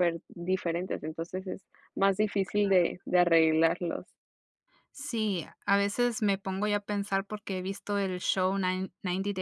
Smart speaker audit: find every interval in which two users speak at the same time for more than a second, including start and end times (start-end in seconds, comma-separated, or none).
none